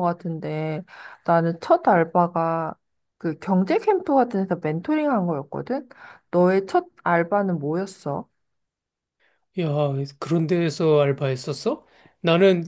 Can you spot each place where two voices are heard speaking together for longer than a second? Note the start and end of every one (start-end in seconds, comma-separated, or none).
none